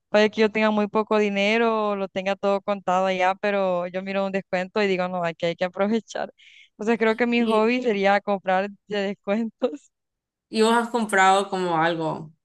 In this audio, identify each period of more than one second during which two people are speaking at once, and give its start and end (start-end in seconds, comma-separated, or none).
none